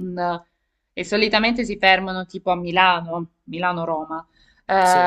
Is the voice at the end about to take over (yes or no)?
no